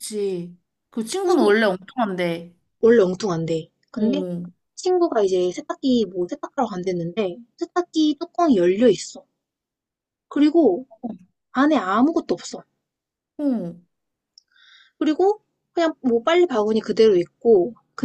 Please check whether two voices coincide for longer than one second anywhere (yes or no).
no